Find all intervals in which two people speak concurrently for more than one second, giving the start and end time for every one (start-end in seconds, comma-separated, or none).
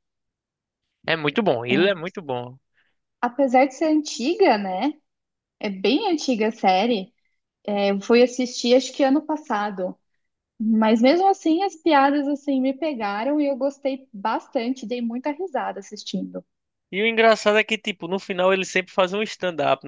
none